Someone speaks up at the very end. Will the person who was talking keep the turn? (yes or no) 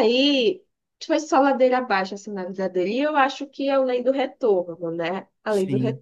no